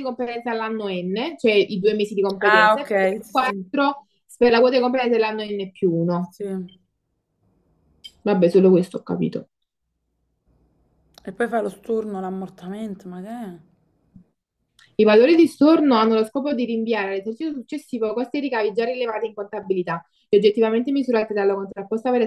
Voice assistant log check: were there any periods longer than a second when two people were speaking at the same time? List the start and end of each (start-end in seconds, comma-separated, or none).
2.4-3.7